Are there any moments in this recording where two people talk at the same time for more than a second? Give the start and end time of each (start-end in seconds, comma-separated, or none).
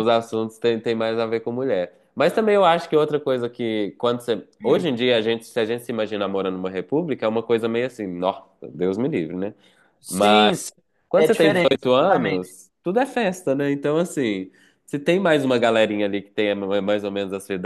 11.2-12.5